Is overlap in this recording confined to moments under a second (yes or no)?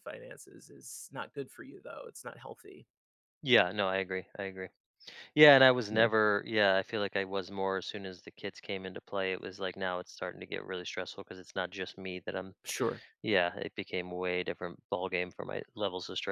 yes